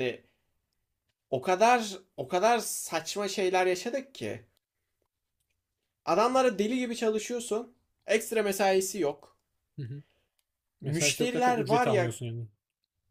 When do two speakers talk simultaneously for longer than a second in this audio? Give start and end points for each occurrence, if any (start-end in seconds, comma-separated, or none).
10.8-12.1